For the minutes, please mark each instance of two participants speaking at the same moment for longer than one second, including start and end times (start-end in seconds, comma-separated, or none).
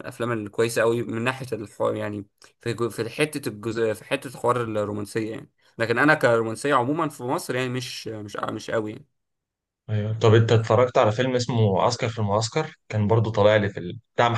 none